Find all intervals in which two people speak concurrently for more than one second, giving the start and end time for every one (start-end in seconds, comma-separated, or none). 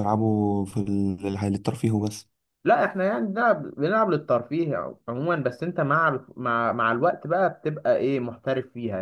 none